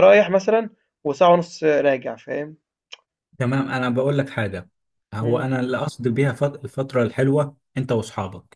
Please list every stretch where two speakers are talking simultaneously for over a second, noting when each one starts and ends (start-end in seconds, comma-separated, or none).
none